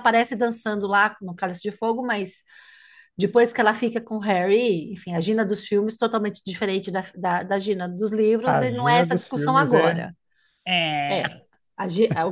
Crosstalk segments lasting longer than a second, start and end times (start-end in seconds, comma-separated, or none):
8.4-10.0